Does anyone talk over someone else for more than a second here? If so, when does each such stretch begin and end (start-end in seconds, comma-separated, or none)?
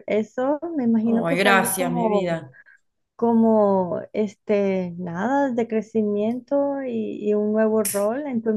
1.0-2.4